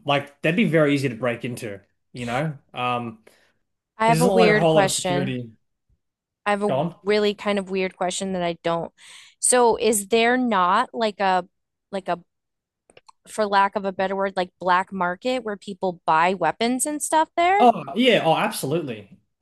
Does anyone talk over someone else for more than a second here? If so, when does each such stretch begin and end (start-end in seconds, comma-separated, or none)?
4.0-5.4